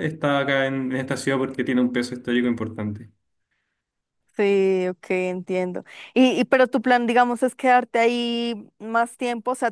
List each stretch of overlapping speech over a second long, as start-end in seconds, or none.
none